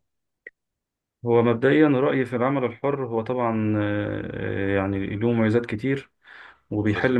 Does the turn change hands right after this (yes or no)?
no